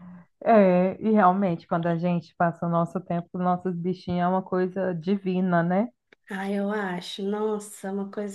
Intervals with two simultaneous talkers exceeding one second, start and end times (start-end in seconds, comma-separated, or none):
none